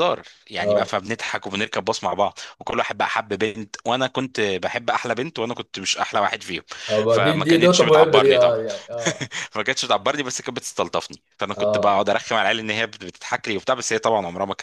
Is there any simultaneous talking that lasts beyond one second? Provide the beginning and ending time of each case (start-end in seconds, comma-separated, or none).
7.1-8.6